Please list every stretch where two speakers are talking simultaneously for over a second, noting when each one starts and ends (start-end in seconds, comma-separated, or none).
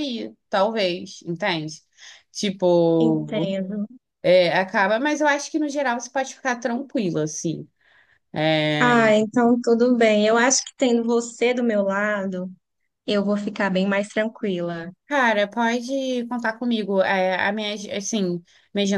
none